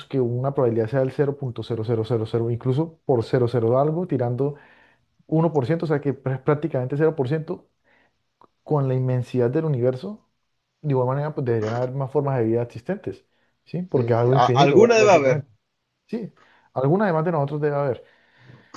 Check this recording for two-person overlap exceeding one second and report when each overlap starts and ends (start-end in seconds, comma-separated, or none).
13.9-15.4